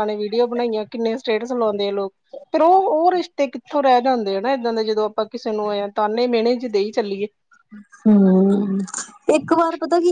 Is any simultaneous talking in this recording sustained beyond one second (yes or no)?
no